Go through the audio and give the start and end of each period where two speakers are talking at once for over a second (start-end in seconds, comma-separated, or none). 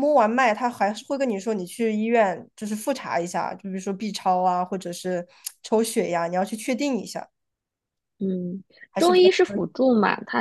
none